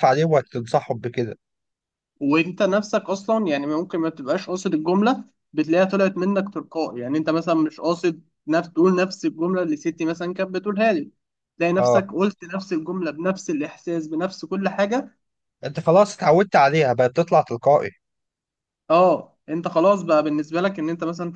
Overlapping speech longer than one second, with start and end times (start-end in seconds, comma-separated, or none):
none